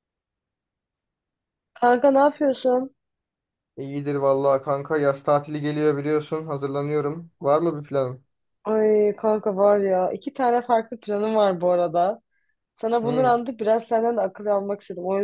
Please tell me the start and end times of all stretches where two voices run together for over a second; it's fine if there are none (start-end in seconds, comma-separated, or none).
none